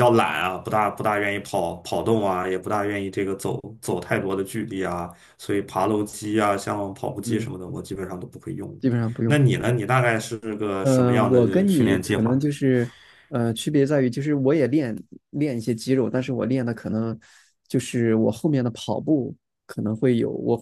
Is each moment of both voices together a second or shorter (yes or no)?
no